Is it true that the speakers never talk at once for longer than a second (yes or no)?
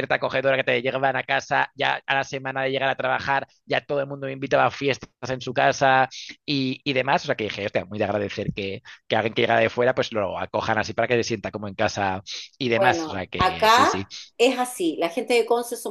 no